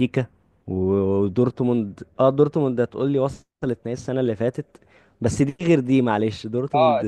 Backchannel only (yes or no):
no